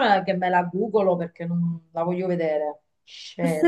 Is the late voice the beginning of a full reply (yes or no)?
yes